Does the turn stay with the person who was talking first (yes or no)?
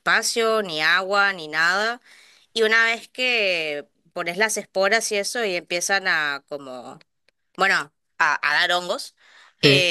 yes